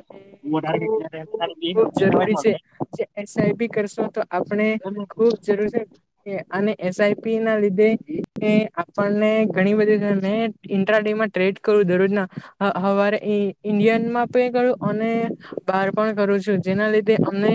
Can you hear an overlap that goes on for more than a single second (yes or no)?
yes